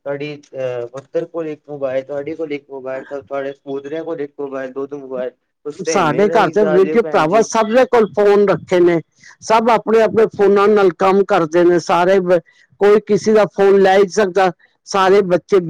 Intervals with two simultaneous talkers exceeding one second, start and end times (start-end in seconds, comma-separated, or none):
5.9-7.5